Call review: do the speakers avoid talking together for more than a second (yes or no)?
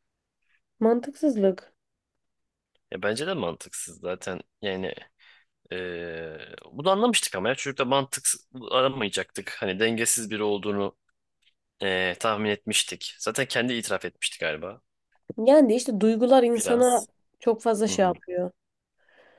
yes